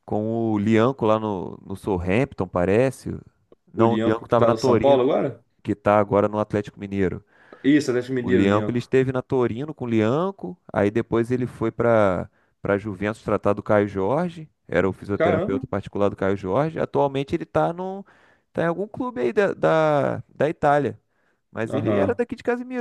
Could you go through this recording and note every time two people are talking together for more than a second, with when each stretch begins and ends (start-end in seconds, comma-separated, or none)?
3.7-5.0